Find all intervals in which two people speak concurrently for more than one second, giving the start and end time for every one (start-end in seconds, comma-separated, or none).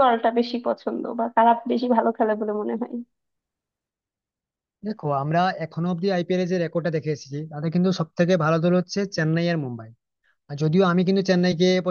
none